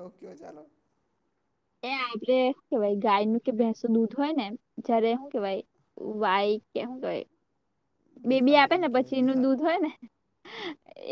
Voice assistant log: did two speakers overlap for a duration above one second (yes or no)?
yes